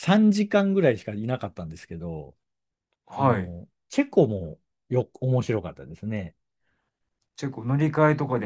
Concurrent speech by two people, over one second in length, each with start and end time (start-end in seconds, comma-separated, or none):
none